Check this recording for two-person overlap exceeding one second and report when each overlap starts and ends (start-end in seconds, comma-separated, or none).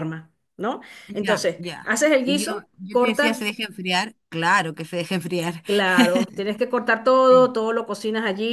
1.1-3.4